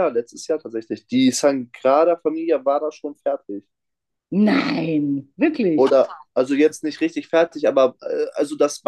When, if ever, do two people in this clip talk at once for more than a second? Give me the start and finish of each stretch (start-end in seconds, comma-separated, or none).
none